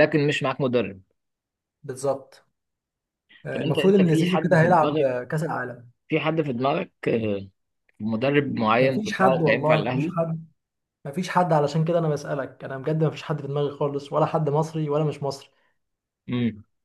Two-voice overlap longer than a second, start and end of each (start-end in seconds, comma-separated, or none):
3.5-5.1, 8.8-10.2